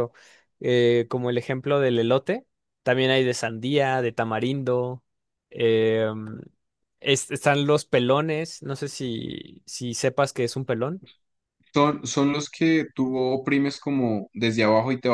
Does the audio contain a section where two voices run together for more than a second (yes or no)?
no